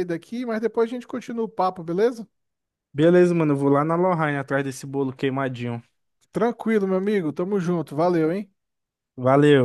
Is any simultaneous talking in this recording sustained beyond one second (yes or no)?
no